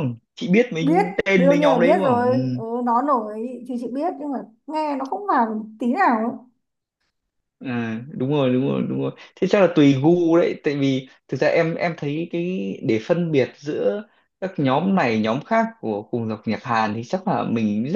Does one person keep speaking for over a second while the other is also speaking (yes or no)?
yes